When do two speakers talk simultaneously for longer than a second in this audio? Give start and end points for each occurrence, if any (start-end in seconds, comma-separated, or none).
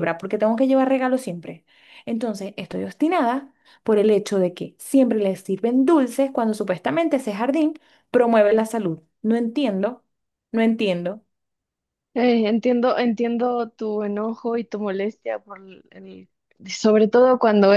none